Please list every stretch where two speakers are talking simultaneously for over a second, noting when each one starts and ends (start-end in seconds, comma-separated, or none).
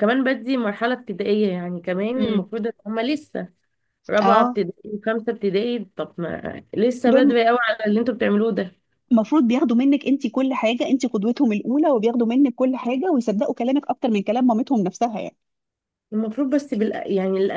none